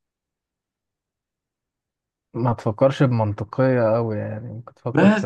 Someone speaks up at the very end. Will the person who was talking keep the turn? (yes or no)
no